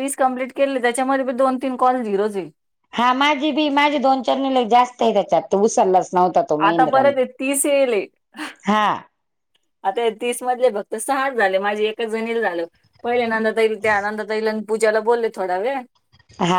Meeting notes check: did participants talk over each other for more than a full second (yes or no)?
no